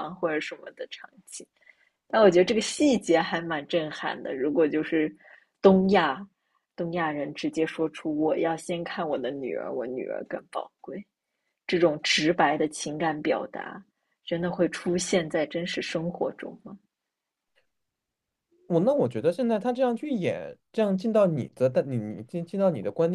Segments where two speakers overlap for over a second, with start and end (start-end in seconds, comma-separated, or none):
none